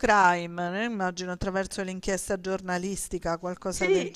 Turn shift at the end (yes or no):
yes